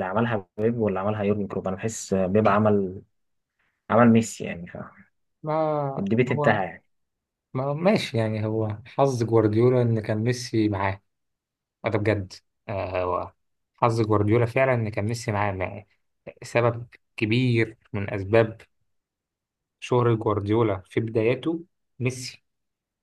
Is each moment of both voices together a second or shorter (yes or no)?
yes